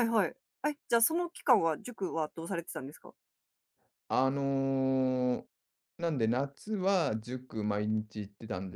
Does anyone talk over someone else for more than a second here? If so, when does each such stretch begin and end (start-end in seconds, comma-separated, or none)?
none